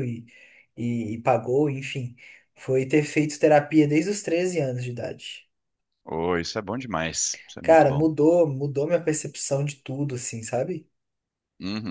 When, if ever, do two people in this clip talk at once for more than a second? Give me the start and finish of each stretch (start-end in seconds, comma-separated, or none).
none